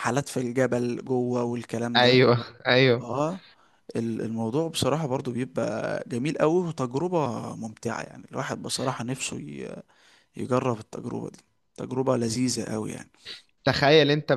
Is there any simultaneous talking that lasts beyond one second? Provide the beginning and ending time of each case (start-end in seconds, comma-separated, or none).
none